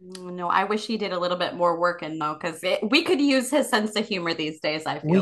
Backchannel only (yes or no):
no